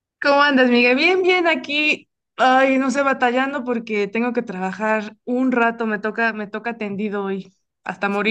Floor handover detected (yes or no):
yes